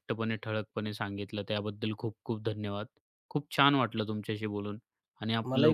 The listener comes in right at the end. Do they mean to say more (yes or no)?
yes